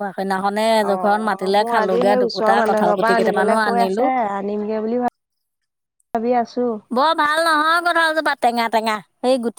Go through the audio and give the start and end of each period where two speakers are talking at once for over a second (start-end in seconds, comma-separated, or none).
2.2-4.0